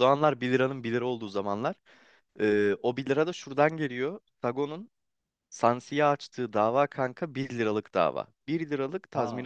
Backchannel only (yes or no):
yes